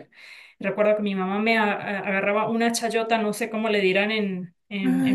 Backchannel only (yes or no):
no